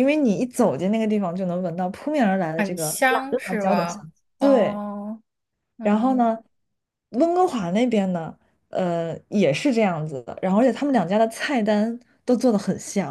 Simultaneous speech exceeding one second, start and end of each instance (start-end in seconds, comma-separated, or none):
2.6-4.8